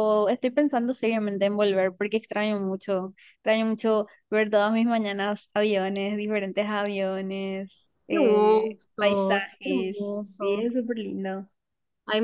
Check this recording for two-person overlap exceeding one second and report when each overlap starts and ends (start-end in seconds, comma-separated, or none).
8.1-10.7